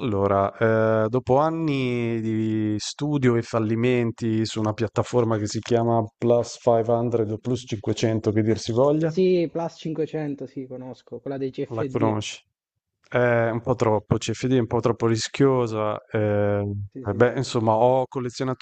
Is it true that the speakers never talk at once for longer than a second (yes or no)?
yes